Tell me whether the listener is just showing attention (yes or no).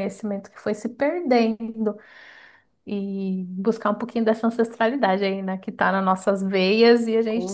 no